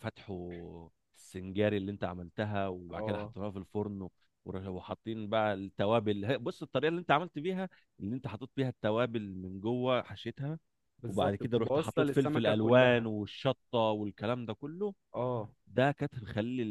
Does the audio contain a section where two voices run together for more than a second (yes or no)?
yes